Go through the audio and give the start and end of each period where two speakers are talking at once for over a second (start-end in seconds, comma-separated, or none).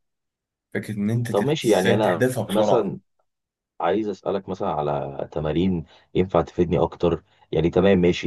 1.3-2.9